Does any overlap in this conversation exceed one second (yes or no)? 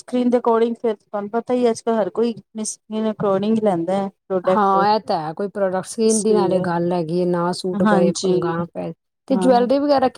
no